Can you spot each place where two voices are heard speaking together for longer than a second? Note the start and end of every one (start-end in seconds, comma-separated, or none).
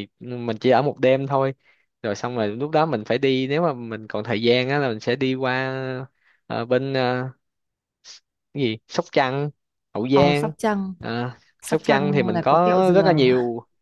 11.6-13.2